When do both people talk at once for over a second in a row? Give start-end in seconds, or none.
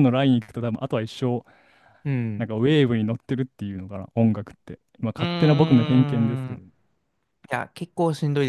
5.0-6.6